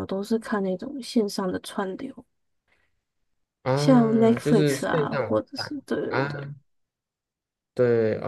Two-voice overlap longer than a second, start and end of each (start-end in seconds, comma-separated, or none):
3.7-6.5